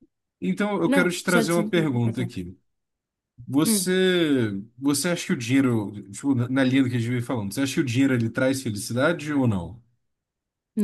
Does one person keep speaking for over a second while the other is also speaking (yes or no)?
yes